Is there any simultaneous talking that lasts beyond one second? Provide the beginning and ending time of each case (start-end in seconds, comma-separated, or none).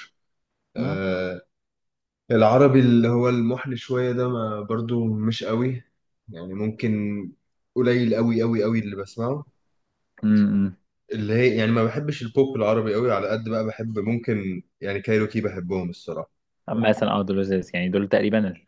none